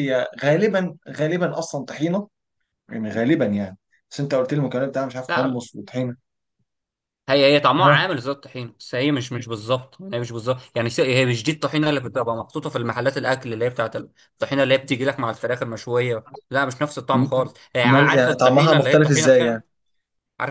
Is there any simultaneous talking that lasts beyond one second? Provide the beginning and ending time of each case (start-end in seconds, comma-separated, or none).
17.9-19.6